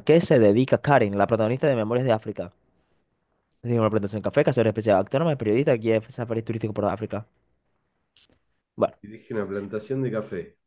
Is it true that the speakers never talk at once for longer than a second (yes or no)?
yes